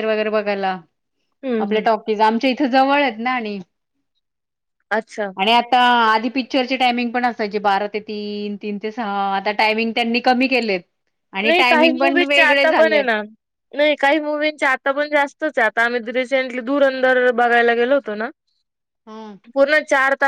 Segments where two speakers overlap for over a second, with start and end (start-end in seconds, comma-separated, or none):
11.5-13.0